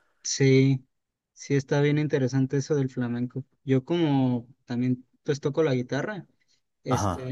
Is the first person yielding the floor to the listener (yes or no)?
no